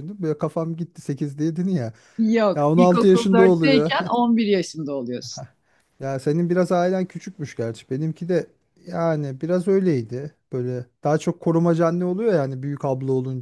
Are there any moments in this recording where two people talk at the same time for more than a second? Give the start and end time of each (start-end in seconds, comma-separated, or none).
2.5-3.9